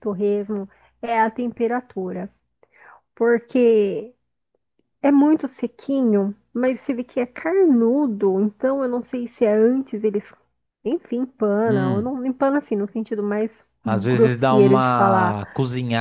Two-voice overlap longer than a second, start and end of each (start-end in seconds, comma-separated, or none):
13.8-15.4